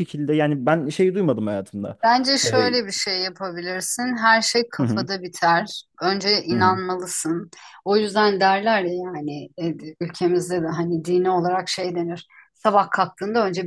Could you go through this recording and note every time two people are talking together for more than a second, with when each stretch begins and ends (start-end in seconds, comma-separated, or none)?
none